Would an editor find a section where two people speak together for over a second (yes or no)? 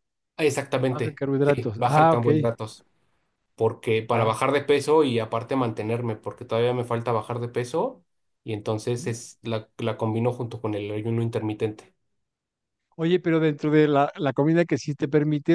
yes